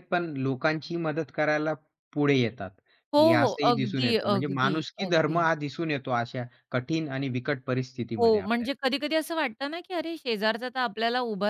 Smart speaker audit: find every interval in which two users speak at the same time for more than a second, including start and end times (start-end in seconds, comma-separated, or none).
3.2-5.5